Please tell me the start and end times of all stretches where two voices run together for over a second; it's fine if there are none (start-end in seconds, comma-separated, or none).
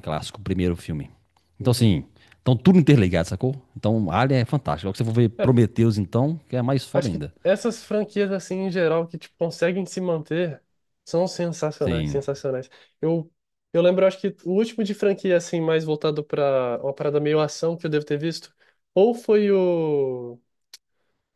none